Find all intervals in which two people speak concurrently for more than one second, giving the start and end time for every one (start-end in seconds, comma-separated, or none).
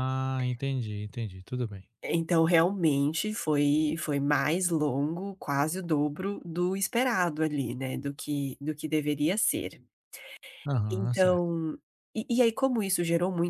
none